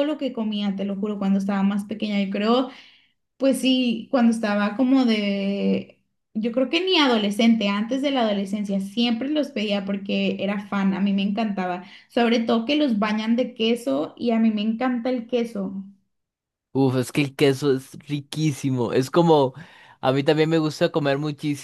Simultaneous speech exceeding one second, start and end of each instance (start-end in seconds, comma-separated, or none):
none